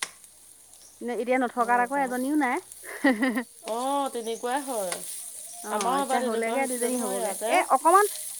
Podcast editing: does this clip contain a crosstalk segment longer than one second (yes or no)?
yes